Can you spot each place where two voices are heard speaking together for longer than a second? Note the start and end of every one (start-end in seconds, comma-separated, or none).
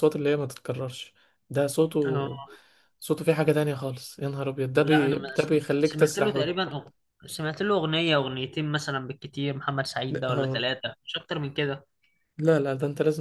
4.8-6.6